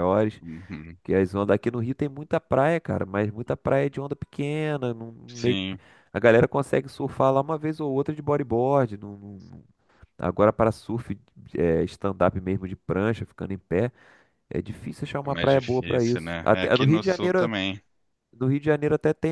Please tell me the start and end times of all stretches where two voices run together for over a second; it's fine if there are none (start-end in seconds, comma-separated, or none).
15.2-17.5